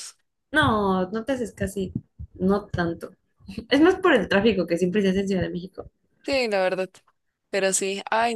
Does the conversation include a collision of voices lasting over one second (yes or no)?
no